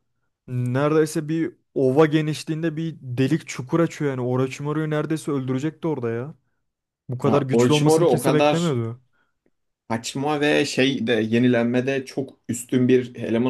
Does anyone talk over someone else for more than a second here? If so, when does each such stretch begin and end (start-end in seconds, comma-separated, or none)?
7.2-8.7